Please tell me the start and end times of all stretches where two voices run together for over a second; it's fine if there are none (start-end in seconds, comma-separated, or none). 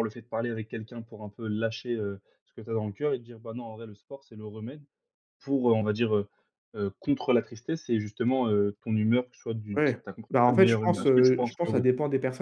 9.8-11.8